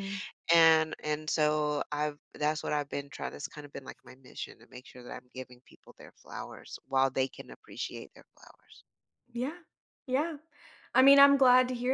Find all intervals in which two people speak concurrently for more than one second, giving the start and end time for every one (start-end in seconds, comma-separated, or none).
none